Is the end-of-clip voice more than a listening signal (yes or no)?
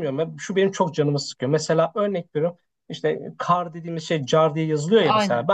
no